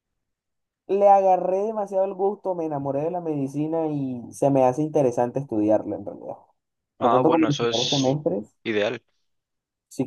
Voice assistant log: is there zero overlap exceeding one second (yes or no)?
no